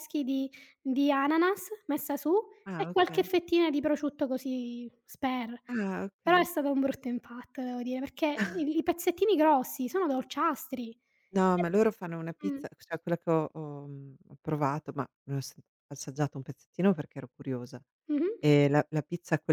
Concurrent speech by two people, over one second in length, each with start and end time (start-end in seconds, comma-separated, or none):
none